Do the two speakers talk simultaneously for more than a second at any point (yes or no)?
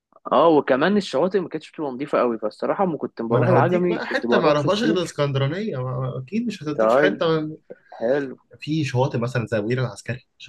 yes